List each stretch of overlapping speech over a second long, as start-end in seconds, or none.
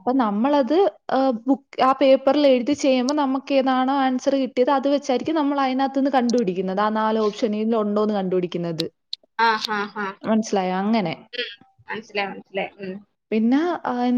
none